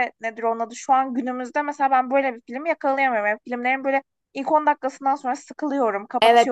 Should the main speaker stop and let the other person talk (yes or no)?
yes